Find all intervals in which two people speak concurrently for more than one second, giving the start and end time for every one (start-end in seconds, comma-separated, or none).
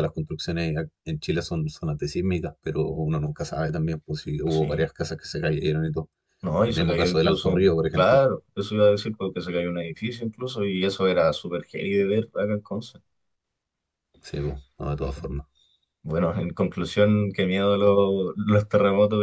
6.7-8.2